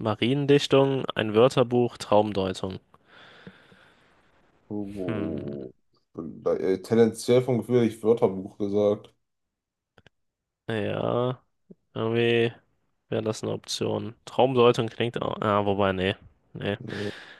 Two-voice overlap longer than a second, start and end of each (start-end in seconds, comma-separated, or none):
none